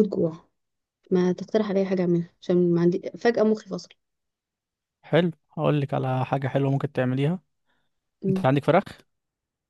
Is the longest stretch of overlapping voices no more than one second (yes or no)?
yes